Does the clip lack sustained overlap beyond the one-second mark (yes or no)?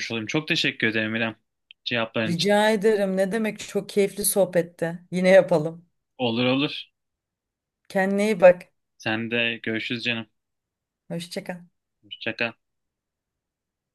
yes